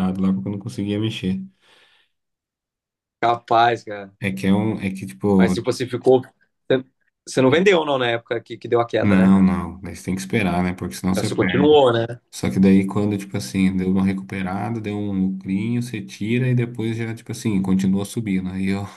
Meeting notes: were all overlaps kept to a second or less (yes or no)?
yes